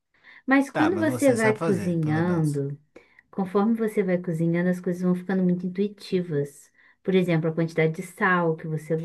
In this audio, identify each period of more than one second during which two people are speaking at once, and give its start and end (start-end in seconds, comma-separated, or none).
0.7-2.6